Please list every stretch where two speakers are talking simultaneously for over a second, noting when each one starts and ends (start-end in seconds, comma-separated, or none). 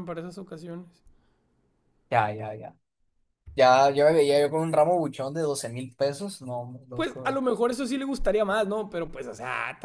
none